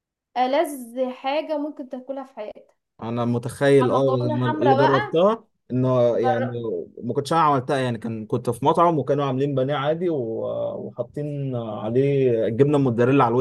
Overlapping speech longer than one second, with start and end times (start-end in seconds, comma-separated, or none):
3.9-5.1